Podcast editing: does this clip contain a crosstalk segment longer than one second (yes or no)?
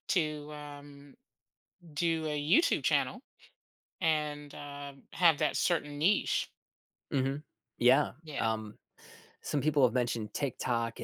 no